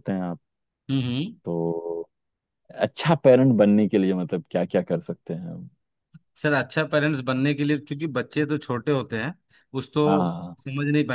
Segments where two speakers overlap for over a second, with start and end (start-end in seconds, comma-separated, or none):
none